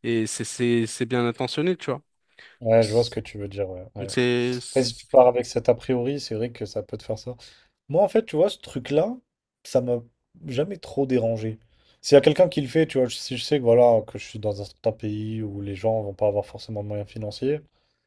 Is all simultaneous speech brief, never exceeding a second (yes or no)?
yes